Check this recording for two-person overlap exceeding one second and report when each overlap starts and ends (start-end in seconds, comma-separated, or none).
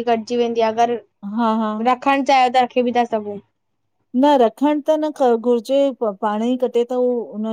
none